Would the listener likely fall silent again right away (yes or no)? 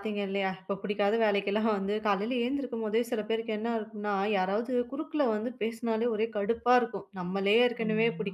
yes